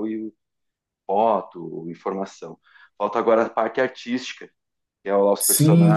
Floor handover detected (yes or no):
no